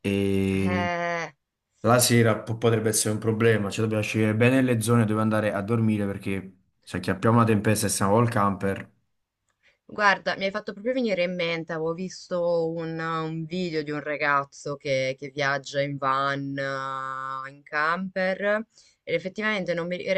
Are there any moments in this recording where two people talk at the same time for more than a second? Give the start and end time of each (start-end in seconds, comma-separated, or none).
none